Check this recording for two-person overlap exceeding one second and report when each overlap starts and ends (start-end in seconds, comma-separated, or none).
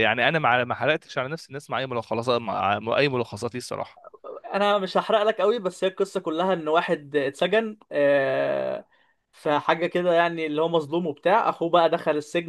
none